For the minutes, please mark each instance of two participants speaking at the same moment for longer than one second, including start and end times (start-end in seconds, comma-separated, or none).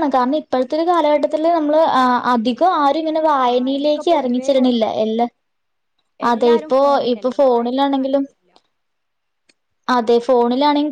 3.5-4.9